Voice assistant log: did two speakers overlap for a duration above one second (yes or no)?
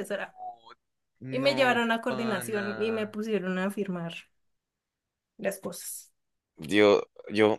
yes